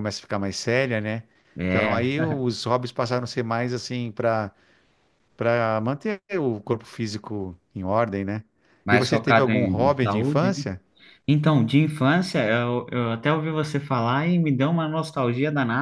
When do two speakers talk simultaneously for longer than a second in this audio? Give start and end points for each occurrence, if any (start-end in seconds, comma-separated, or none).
8.9-10.6